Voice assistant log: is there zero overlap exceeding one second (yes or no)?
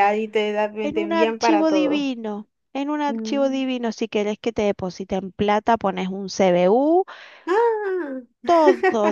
no